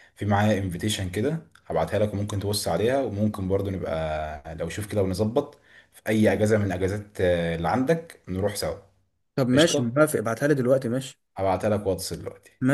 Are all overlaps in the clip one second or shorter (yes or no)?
yes